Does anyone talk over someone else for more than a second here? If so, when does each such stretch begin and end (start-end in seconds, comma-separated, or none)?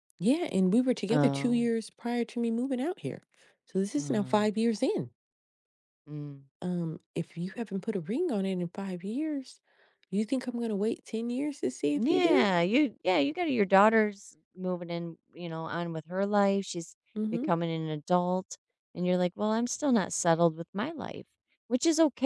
none